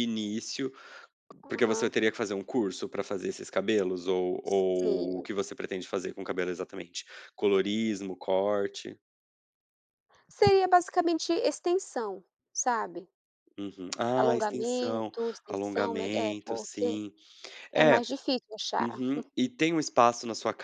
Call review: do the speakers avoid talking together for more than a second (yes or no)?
no